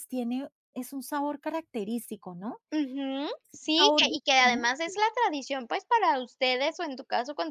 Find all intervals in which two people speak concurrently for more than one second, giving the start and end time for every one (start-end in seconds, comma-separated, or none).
3.7-4.9